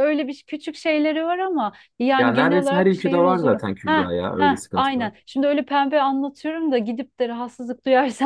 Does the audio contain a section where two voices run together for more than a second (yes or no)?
yes